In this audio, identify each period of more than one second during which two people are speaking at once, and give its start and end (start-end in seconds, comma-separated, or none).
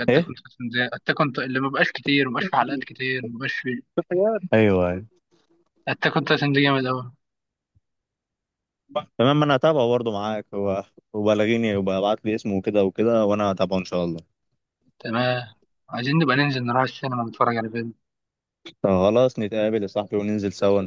none